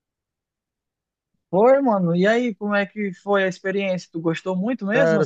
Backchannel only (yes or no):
no